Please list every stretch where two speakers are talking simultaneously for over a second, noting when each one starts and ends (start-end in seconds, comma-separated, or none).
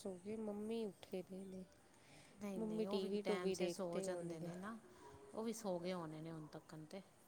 2.6-4.5